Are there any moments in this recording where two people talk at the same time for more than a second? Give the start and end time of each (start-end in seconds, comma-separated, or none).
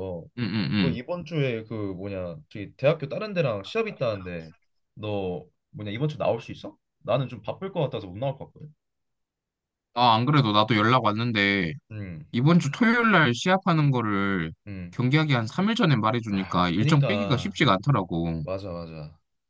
16.3-17.6